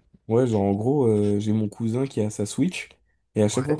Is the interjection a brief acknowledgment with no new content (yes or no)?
yes